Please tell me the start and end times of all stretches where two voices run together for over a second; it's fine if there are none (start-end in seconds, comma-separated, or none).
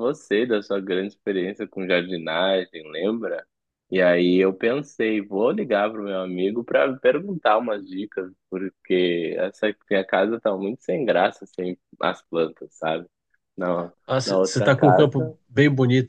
14.1-15.3